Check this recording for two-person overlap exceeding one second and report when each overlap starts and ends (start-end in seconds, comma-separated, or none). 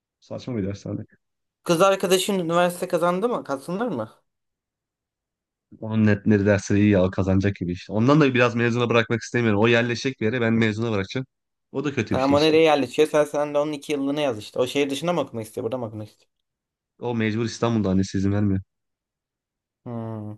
none